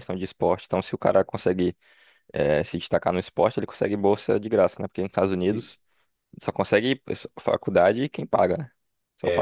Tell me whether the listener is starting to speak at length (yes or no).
yes